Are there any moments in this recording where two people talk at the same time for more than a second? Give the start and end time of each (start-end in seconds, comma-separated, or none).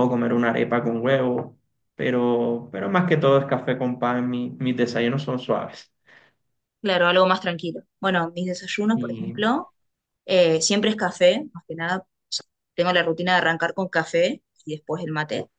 none